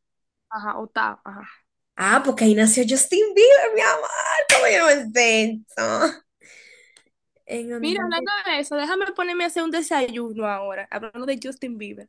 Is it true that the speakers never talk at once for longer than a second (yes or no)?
yes